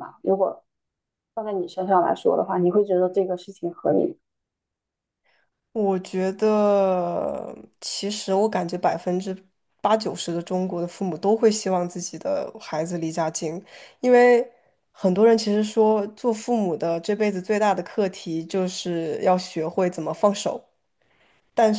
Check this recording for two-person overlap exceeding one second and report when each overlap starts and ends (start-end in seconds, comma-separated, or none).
none